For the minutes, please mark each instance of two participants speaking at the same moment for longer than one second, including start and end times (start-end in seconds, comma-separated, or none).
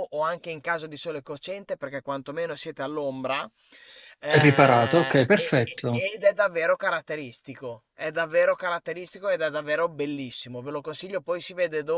4.2-6.0